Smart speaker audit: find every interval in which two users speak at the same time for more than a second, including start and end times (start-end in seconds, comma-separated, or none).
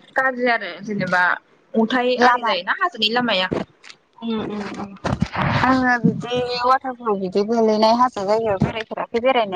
none